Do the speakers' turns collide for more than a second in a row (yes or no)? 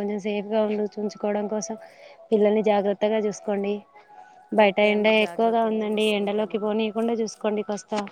yes